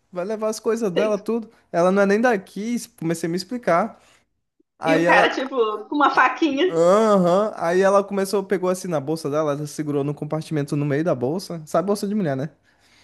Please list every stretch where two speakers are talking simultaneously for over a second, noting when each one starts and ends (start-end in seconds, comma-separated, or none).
none